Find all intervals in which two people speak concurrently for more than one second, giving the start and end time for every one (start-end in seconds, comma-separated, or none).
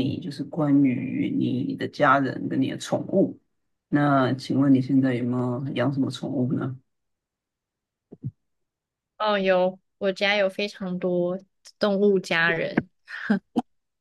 none